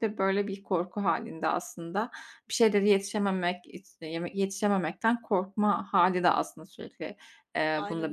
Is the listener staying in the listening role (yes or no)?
yes